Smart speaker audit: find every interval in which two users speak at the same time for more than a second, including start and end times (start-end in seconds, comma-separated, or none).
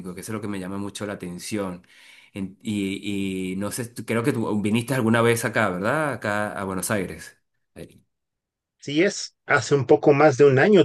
none